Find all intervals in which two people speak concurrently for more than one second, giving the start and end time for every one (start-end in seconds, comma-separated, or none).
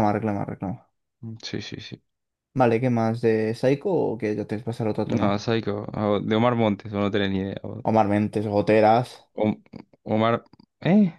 none